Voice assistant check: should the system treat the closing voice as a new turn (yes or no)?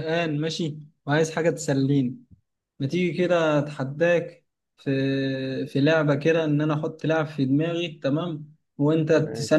no